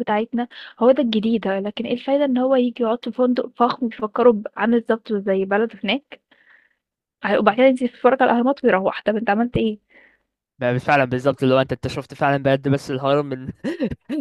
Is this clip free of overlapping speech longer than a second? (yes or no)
yes